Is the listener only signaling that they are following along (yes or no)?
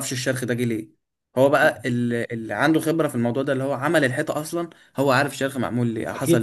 no